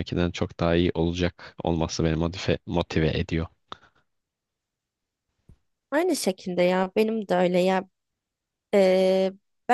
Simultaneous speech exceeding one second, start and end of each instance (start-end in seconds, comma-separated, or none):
none